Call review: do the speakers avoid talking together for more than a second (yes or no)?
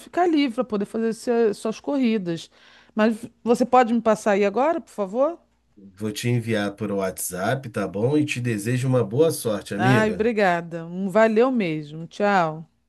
yes